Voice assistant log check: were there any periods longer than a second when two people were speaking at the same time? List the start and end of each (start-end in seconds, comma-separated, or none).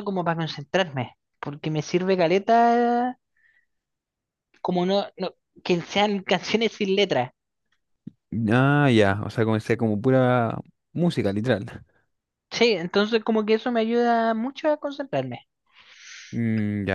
none